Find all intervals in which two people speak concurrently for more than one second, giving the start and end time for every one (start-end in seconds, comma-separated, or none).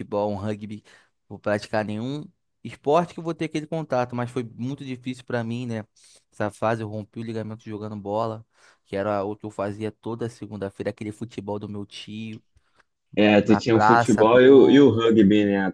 13.4-15.0